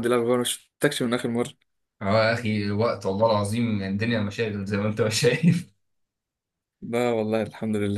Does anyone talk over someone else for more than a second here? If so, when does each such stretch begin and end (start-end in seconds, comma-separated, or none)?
none